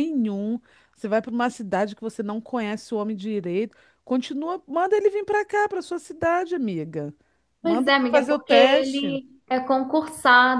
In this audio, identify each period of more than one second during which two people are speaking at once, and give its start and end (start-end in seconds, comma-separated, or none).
7.6-9.2